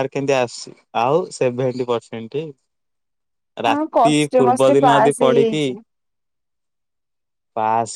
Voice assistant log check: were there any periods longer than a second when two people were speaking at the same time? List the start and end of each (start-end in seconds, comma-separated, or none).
3.7-5.7